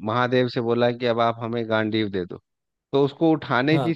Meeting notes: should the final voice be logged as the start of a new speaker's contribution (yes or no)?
no